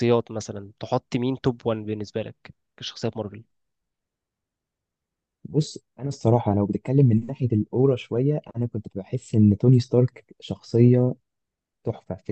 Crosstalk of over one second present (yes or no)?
no